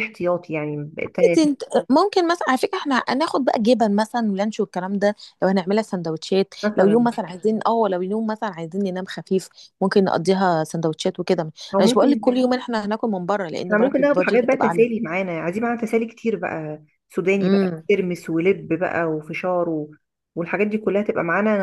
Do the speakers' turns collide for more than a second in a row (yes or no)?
yes